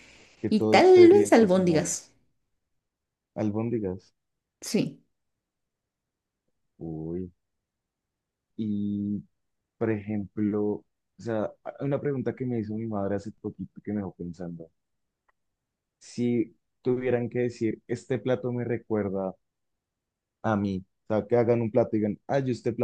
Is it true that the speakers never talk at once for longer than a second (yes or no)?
no